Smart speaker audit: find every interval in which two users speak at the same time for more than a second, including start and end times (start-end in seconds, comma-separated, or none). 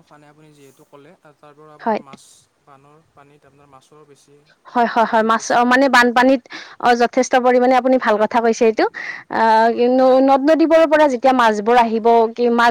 none